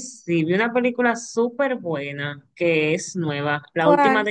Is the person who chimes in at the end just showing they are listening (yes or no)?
yes